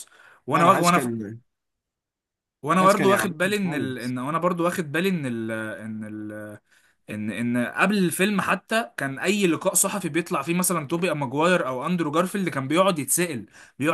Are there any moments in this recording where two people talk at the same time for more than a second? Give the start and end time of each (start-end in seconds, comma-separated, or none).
2.8-4.2